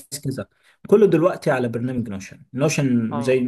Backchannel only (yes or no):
yes